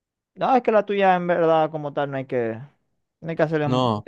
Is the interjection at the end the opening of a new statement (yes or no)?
yes